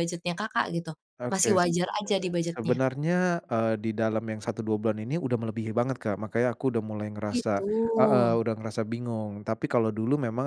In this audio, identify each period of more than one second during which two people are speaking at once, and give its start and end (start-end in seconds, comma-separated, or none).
none